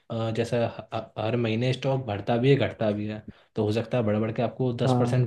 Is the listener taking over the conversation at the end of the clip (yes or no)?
no